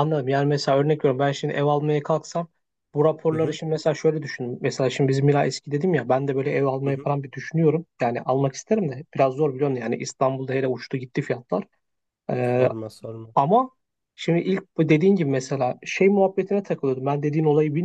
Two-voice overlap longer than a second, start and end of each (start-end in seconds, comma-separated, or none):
none